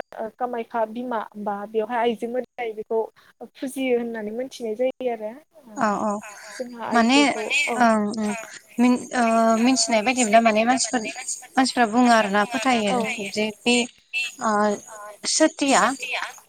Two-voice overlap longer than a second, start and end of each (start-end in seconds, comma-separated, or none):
none